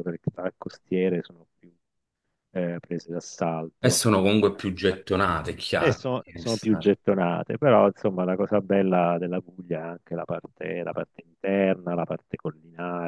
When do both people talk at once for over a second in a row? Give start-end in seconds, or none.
none